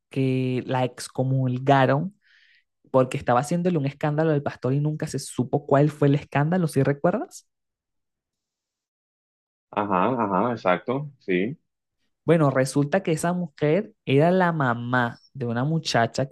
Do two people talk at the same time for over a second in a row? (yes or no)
no